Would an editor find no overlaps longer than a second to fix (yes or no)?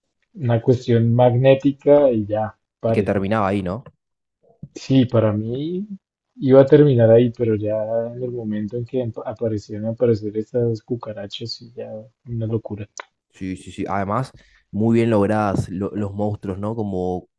yes